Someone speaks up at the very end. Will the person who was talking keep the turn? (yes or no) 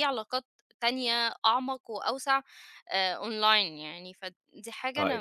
no